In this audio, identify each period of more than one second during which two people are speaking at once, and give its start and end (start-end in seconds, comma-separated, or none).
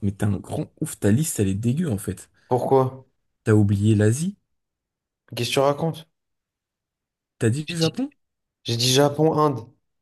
none